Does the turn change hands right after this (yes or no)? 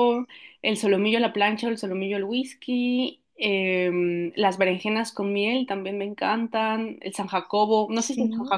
no